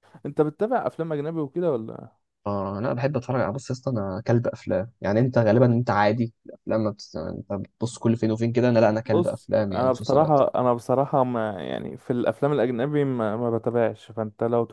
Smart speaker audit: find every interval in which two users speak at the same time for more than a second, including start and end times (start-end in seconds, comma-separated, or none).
9.0-10.4